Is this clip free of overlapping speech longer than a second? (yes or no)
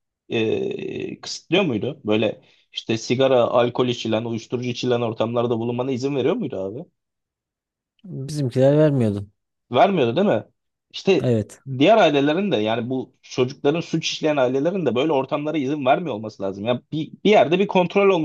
yes